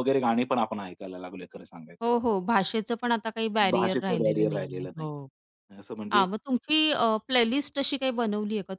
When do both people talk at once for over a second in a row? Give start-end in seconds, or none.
3.7-5.1